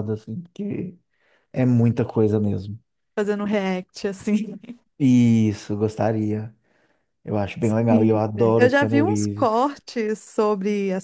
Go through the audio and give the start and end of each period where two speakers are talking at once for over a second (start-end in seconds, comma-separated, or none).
7.6-9.7